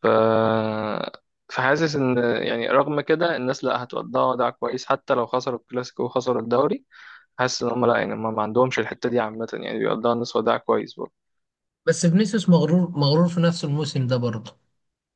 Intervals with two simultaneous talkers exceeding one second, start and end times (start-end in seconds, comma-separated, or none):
none